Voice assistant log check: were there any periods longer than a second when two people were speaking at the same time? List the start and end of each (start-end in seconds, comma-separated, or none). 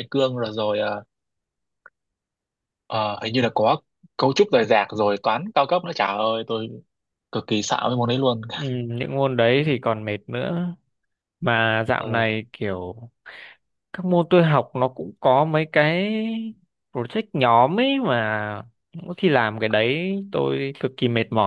none